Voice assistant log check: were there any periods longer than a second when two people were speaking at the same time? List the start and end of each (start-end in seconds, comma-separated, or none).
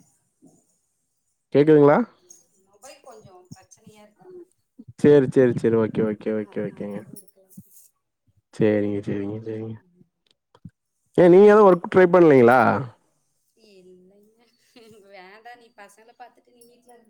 none